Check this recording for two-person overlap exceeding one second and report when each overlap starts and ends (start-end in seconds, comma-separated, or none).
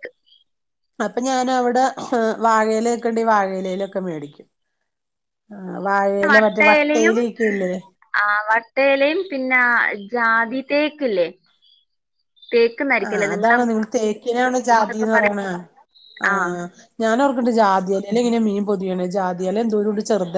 none